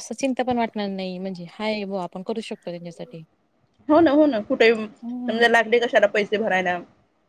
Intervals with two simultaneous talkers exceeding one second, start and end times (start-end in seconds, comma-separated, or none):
none